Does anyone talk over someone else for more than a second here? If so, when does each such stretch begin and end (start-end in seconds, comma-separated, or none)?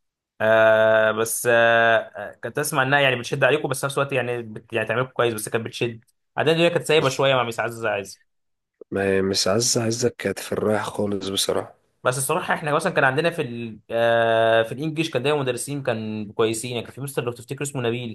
none